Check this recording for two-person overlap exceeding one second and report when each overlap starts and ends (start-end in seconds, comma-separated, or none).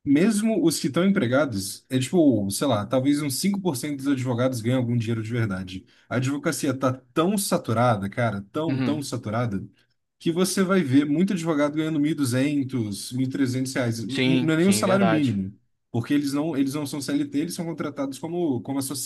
14.1-15.4